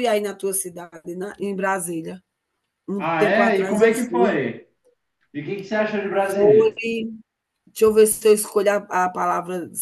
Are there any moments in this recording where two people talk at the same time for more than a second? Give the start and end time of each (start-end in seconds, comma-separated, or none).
3.0-4.4